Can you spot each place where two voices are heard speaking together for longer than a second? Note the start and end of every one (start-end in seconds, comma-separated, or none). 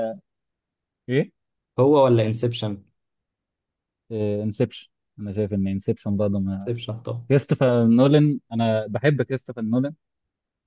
none